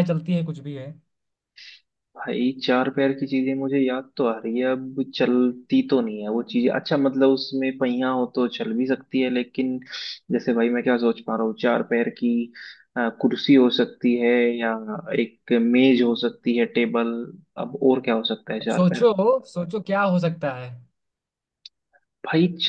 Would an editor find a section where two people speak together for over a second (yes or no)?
no